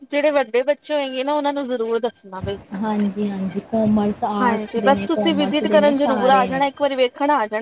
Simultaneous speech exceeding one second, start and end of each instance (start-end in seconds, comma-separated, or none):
4.4-6.6